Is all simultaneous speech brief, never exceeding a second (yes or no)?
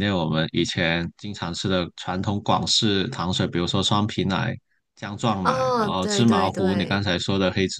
no